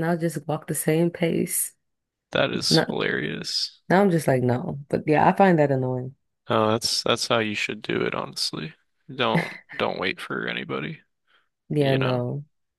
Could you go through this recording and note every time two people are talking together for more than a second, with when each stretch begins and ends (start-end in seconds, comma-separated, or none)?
none